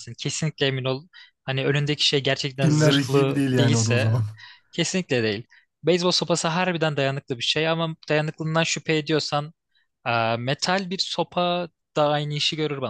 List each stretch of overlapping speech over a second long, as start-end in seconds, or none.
2.6-4.2